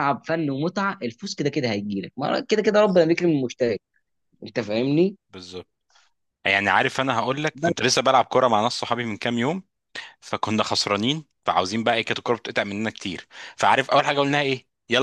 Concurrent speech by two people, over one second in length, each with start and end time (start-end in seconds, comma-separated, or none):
none